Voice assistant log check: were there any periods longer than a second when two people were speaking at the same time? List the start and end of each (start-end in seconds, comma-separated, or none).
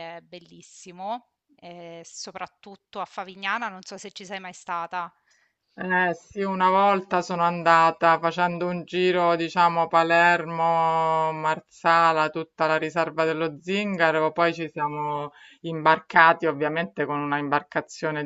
none